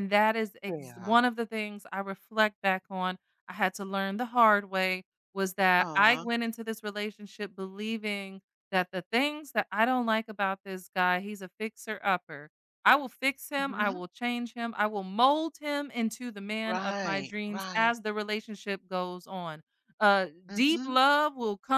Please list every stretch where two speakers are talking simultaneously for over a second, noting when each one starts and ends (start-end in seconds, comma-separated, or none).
16.6-17.9